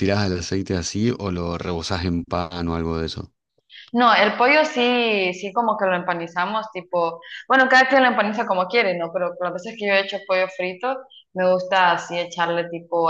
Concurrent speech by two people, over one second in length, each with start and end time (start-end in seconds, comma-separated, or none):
none